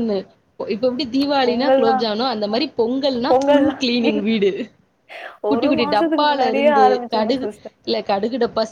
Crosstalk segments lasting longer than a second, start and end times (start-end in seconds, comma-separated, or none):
5.5-7.5